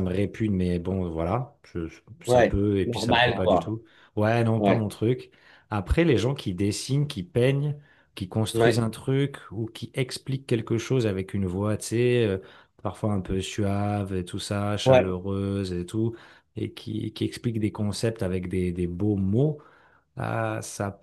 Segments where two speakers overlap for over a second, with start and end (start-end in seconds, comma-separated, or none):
2.3-3.7